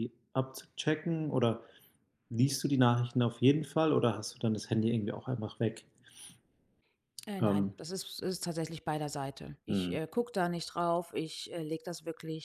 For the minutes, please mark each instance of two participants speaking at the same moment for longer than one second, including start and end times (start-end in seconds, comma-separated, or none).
none